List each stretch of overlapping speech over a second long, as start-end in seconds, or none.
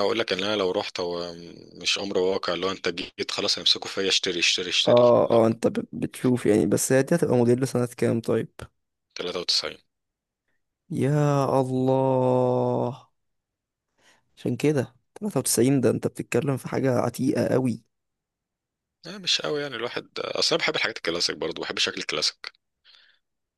none